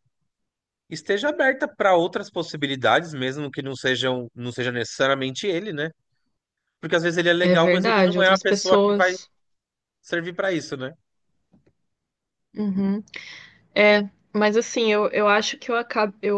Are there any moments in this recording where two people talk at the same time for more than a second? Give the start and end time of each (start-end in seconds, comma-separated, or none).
7.4-9.2